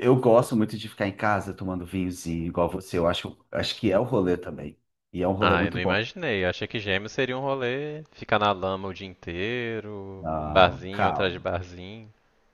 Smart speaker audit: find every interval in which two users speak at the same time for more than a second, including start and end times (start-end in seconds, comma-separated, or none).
10.2-11.5